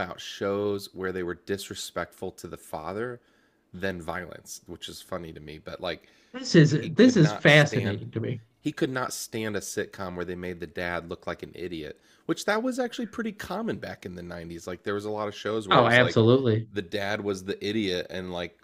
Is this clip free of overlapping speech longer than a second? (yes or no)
no